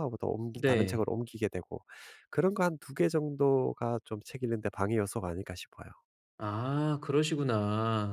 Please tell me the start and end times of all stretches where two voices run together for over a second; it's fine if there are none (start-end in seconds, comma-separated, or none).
none